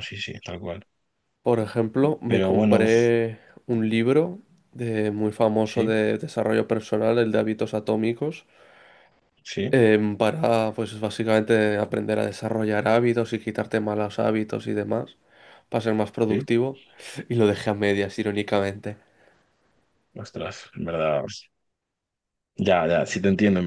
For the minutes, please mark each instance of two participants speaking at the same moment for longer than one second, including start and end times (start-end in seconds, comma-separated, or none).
none